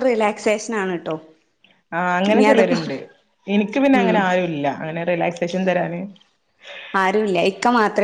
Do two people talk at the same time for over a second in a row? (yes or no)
no